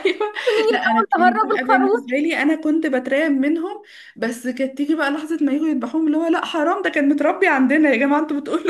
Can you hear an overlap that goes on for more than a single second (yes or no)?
yes